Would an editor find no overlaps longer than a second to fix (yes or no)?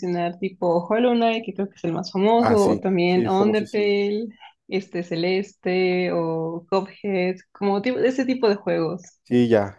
no